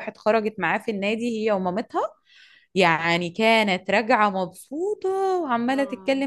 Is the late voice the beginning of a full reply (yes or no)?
no